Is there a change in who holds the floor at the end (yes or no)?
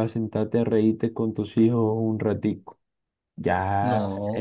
no